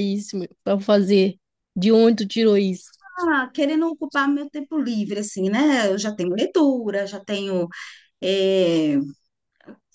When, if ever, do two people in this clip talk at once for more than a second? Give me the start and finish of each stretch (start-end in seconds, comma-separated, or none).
none